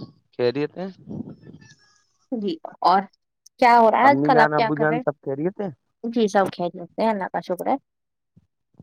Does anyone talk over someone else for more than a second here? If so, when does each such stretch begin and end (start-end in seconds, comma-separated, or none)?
4.1-5.7